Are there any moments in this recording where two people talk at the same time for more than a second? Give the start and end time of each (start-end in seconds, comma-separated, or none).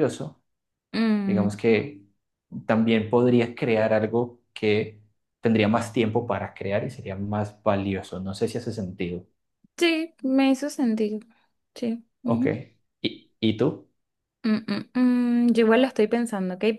none